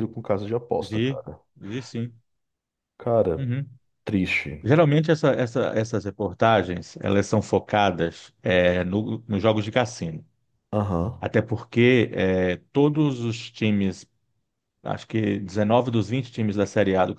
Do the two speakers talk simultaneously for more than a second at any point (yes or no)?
no